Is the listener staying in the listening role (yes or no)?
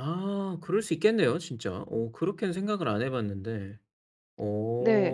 no